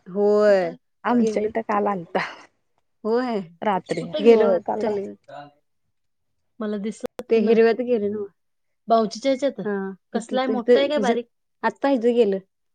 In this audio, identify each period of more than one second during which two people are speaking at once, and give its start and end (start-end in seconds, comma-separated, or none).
3.6-5.1